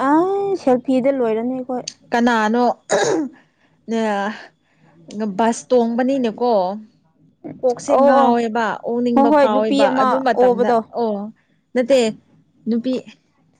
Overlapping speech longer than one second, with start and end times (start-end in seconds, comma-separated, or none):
9.1-10.8